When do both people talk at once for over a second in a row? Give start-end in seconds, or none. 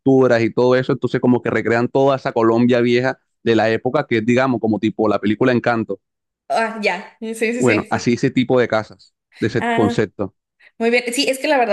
none